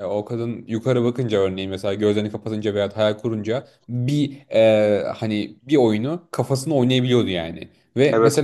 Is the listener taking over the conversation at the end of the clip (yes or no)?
no